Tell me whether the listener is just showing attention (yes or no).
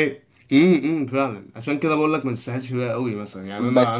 no